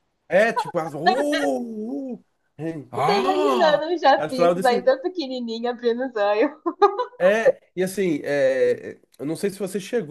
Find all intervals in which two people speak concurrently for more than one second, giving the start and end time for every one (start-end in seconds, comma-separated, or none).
3.0-4.9